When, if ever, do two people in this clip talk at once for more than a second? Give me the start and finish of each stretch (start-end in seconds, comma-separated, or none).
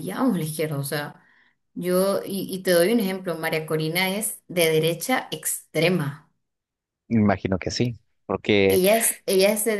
none